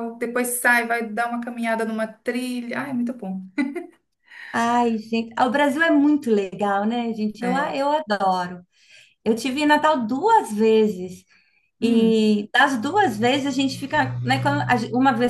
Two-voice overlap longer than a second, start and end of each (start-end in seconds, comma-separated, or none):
none